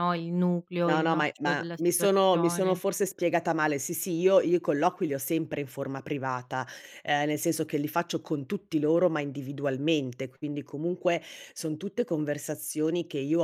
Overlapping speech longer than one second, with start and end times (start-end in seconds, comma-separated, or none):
0.8-2.8